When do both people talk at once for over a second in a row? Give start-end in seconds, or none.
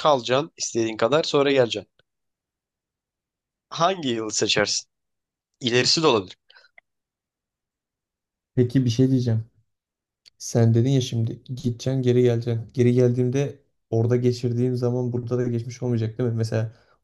none